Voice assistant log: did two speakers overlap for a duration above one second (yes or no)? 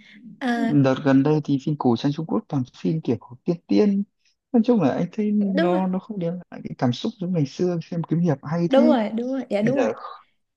no